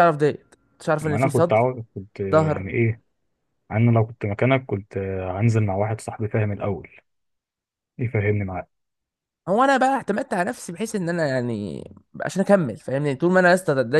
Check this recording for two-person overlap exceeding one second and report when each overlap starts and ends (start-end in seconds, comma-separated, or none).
none